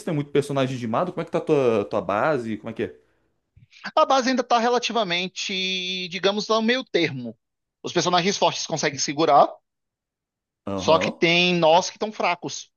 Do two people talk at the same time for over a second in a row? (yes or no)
no